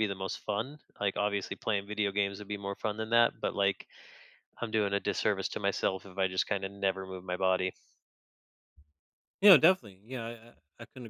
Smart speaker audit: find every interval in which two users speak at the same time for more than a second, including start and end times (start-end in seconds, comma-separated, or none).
none